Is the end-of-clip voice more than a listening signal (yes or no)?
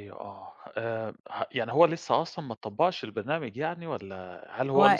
no